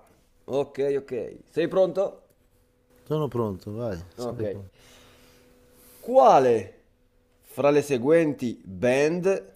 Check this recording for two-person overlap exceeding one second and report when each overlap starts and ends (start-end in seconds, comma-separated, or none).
none